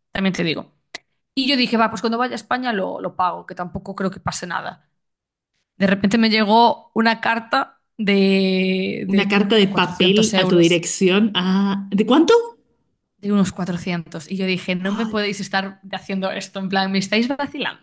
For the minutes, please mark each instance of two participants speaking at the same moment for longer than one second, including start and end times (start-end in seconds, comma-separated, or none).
9.1-10.8